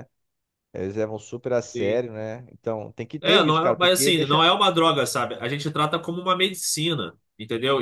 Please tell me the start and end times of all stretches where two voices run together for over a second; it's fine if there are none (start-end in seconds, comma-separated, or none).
3.2-4.4